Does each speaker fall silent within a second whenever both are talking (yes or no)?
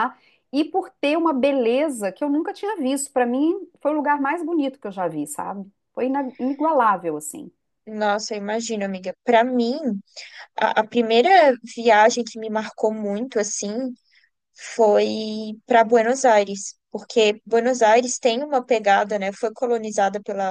yes